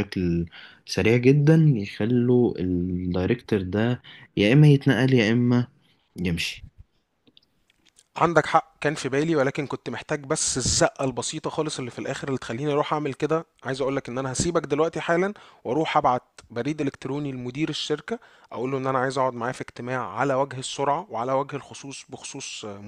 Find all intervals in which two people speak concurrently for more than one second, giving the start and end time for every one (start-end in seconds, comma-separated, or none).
none